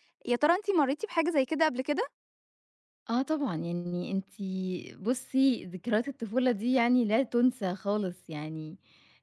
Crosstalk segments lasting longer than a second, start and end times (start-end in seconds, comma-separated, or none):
none